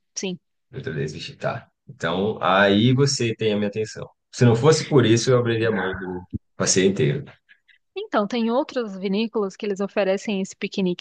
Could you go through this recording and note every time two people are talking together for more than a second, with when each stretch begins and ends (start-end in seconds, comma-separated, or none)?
none